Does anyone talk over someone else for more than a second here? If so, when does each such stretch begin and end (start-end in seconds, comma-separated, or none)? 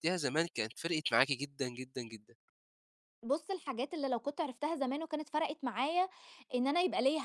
none